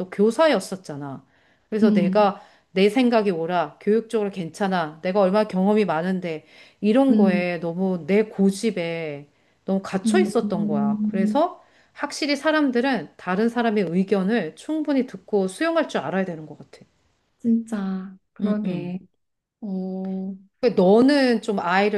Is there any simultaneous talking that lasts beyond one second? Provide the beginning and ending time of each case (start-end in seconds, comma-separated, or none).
10.0-11.4